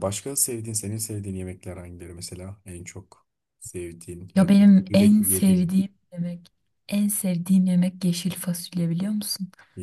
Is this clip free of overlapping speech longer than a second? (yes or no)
no